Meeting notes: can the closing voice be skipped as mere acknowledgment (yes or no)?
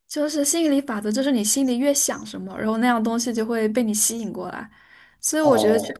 yes